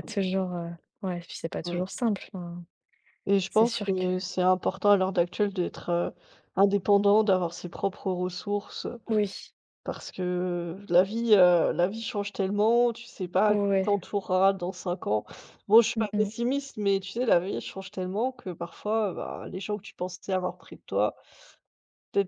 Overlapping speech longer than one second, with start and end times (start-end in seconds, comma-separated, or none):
none